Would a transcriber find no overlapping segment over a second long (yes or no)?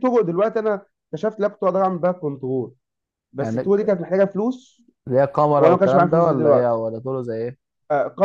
no